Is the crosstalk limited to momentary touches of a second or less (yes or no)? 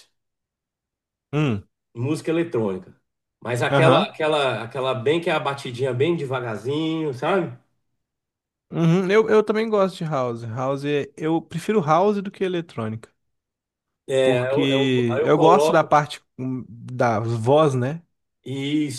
no